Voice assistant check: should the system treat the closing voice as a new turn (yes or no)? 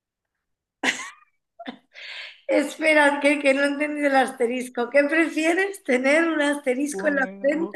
yes